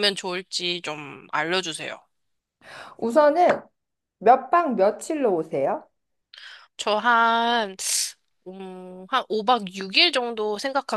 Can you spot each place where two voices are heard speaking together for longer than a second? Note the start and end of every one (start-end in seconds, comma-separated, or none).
none